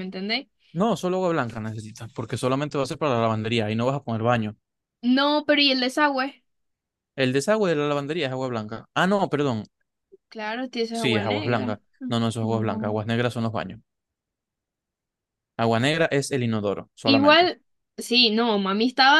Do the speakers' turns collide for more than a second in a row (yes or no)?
yes